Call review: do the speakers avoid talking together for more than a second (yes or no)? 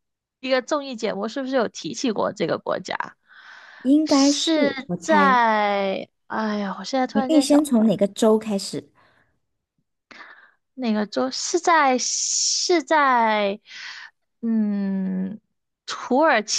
no